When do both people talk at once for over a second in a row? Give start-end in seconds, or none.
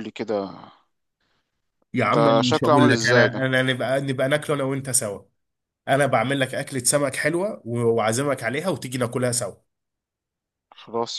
2.1-3.5